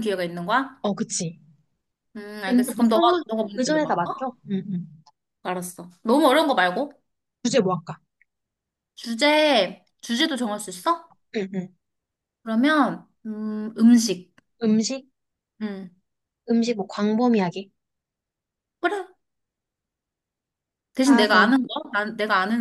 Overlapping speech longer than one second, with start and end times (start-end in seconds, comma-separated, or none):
2.5-4.1